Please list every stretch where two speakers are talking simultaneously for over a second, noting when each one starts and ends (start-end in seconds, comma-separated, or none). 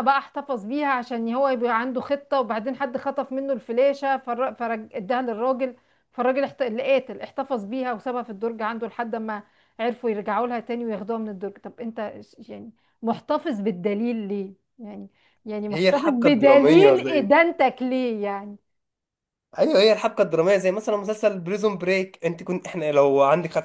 15.7-17.3